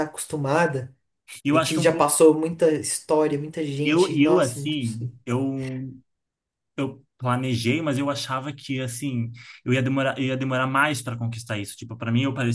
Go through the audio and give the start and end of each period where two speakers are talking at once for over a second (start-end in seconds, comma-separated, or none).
3.8-5.1